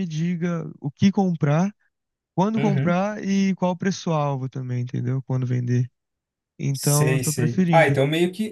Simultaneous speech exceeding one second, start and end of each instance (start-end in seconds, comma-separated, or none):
6.7-8.0